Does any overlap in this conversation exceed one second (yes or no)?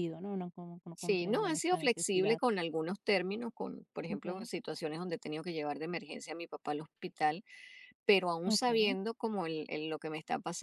yes